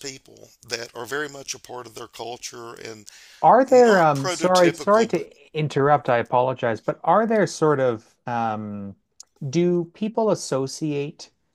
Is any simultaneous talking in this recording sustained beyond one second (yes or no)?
yes